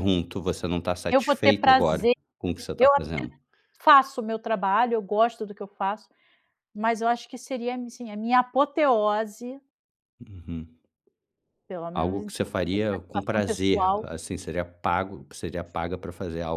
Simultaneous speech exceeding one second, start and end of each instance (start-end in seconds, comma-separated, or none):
1.1-3.2, 11.9-14.1